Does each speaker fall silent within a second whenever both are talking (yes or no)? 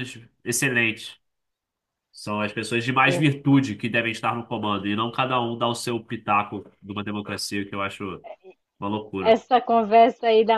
yes